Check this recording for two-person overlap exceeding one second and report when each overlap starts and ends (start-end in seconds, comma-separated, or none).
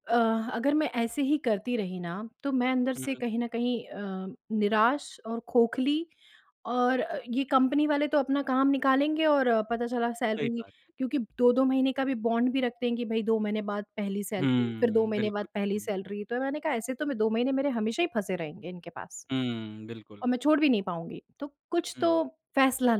14.4-15.9